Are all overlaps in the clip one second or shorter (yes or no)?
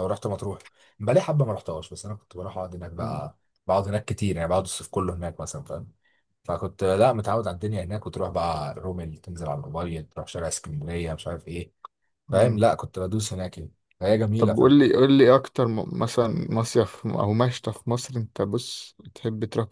yes